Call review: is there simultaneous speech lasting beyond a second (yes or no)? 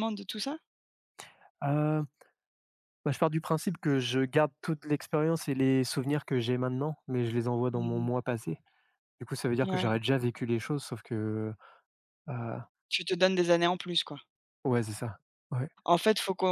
no